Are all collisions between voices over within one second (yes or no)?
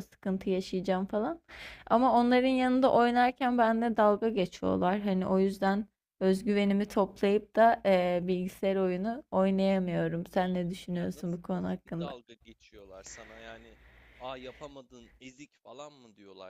no